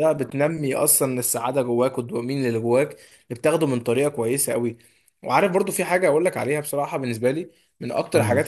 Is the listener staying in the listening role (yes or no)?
yes